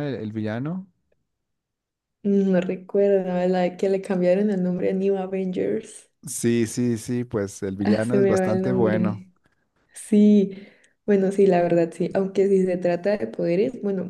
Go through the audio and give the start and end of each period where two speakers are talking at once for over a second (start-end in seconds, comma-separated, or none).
7.8-9.2